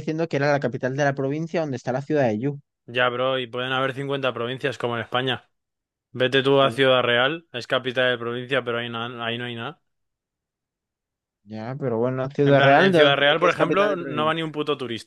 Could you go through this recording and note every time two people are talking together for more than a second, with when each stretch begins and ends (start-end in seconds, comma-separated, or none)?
12.4-14.5